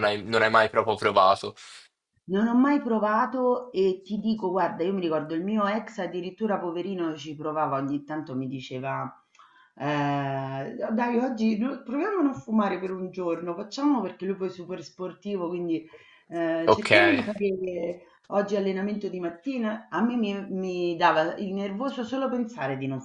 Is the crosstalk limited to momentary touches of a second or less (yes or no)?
yes